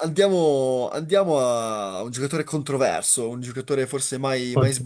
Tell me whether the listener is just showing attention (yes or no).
yes